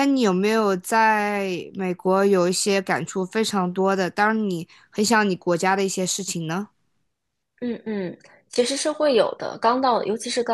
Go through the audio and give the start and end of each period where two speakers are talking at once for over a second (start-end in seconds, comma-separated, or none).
none